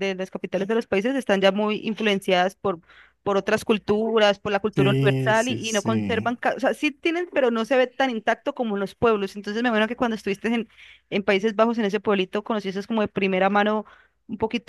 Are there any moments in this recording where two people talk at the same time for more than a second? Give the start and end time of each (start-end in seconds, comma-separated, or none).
4.7-6.3